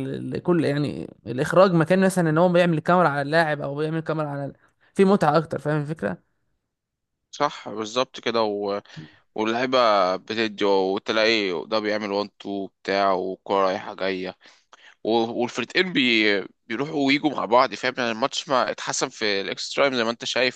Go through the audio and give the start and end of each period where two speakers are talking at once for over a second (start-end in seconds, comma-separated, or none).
none